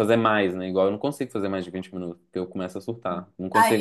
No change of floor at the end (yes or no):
no